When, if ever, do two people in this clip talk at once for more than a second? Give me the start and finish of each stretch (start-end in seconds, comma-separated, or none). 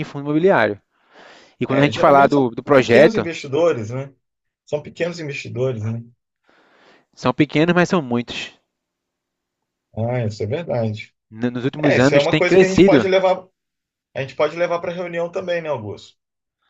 1.7-3.3, 11.8-13.1